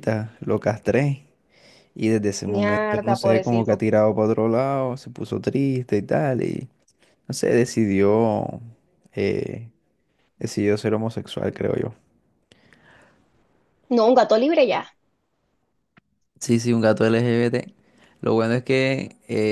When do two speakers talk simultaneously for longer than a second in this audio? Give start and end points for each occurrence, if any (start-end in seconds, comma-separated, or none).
2.4-3.8